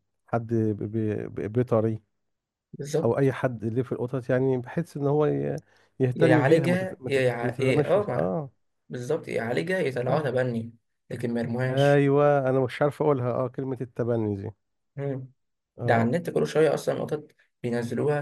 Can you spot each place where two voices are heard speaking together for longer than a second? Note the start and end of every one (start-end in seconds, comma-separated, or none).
6.2-8.3